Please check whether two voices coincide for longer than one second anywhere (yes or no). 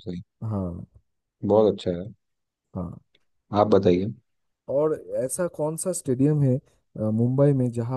no